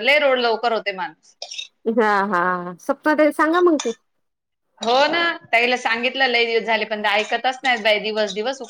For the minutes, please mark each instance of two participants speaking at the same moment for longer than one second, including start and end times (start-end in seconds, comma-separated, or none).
none